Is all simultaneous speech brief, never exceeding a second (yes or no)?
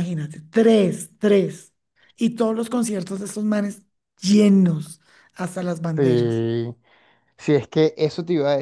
yes